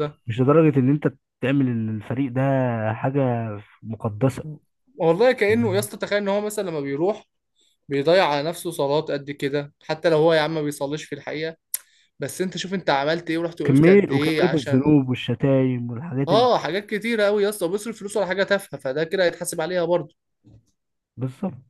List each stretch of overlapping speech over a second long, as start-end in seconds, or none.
13.7-14.9